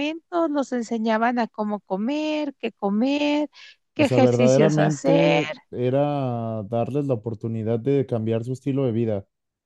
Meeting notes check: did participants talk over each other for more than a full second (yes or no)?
yes